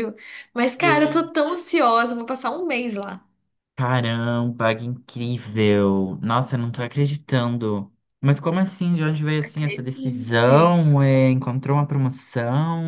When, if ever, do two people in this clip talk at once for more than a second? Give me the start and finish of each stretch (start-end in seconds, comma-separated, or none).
9.4-10.8